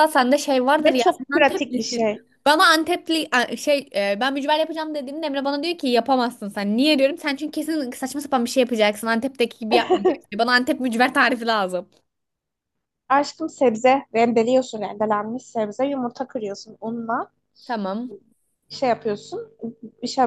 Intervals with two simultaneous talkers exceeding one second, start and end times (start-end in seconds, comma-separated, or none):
0.8-2.1